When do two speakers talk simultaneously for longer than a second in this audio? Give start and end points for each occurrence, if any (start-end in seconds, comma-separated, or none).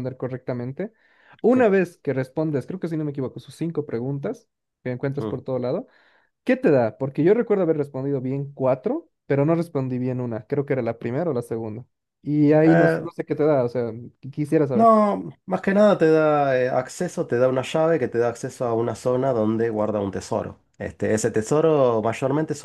none